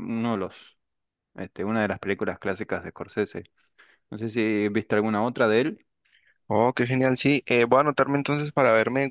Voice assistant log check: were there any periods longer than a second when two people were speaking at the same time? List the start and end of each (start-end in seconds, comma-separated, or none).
none